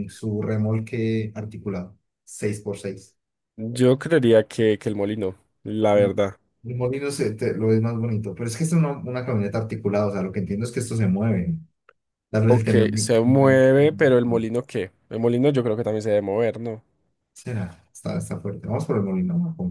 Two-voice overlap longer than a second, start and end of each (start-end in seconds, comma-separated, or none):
12.4-14.1